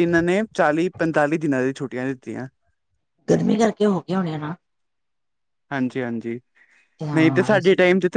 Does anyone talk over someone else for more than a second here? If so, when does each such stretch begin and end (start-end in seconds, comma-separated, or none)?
none